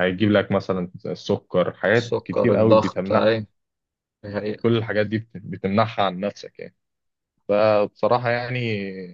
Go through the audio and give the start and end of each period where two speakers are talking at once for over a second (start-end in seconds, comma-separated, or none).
1.9-3.3